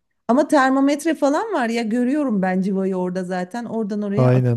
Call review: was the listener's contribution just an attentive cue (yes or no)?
no